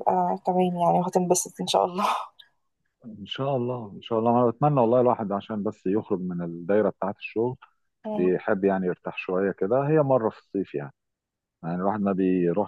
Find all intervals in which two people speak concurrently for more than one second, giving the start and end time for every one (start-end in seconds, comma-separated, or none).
none